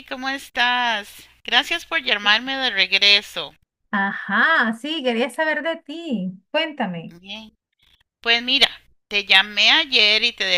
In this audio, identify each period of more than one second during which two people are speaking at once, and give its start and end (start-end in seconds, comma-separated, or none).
none